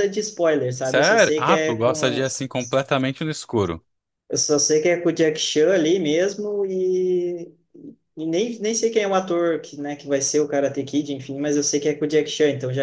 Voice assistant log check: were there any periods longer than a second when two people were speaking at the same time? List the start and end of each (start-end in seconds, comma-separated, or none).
0.8-2.2